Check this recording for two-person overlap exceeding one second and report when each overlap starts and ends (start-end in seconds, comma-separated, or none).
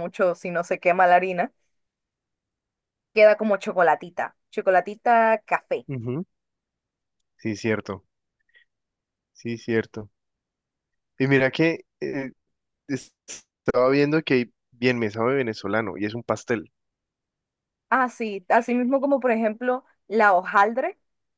none